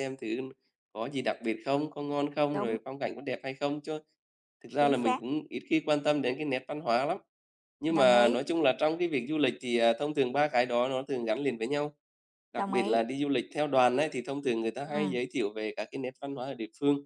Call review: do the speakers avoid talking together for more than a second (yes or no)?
yes